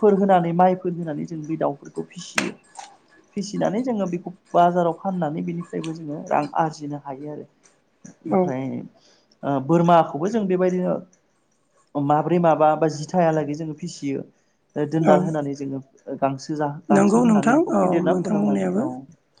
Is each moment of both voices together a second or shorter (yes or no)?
no